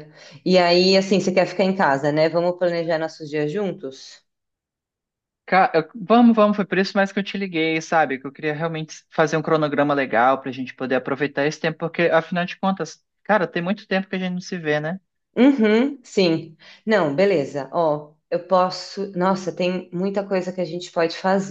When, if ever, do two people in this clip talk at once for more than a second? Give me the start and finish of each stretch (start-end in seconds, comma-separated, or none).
none